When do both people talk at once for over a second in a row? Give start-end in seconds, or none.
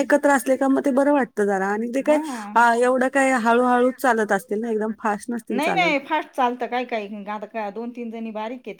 3.1-5.9